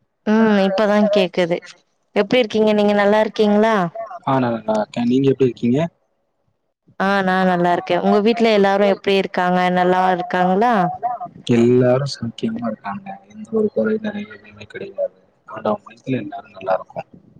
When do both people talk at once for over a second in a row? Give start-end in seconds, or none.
none